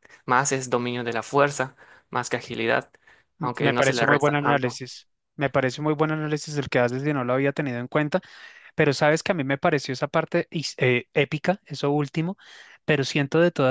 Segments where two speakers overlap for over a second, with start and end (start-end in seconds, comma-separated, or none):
3.4-4.8